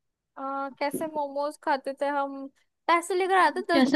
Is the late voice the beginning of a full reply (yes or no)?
yes